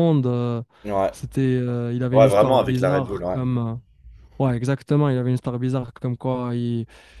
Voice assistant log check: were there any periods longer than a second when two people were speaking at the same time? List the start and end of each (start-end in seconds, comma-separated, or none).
2.1-3.4